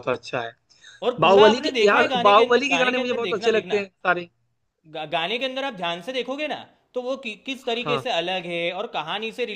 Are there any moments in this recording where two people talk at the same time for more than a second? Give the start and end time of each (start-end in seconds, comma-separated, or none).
1.2-3.9